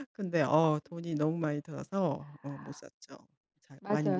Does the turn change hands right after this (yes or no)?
yes